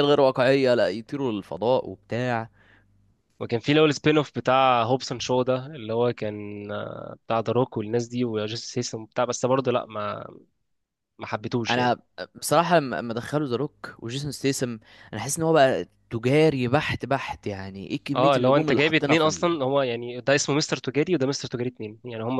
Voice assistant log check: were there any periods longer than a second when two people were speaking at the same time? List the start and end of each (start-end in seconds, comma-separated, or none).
18.1-19.5